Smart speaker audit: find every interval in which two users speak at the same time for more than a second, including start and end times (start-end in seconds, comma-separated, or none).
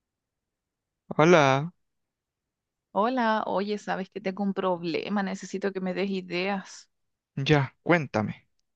none